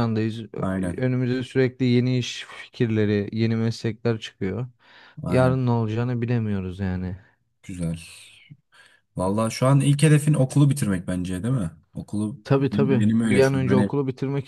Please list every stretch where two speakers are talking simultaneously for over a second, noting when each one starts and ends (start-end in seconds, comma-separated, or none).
12.4-13.9